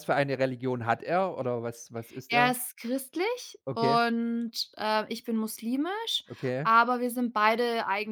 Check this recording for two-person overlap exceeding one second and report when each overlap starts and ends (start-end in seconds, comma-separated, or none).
none